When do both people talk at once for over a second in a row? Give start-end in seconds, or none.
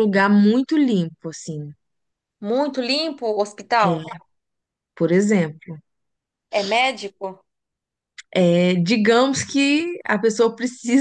none